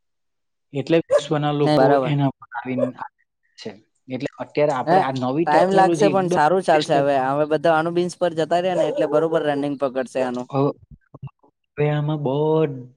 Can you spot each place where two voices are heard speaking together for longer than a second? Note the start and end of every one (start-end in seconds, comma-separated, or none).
4.9-7.0